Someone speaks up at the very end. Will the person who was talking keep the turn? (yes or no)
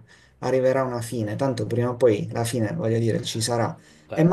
yes